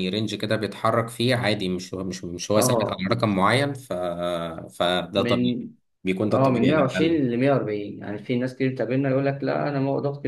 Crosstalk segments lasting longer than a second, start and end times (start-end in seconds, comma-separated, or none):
none